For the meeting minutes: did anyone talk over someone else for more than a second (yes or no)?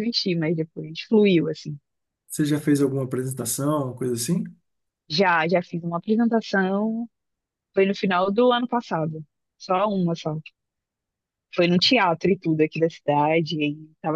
no